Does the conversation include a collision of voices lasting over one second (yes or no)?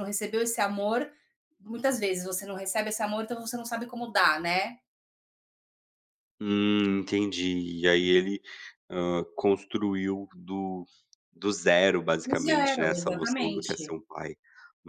yes